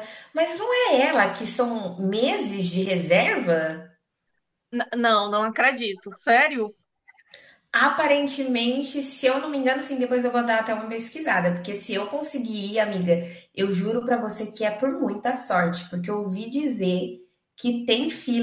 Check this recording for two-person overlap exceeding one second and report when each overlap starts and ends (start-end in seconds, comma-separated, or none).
none